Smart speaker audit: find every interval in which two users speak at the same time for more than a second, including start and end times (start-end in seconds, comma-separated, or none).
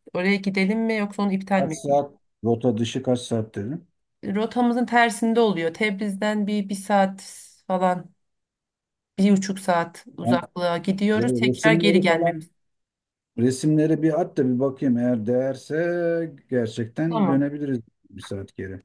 11.2-12.4